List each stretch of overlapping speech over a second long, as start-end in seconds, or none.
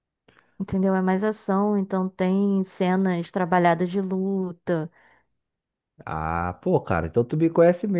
none